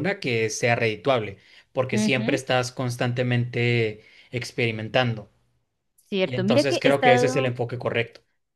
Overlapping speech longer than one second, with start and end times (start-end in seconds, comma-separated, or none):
6.2-7.5